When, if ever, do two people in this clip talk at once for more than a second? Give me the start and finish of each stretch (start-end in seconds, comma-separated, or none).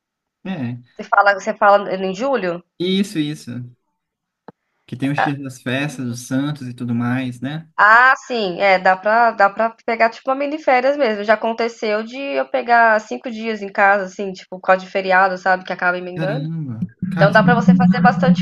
none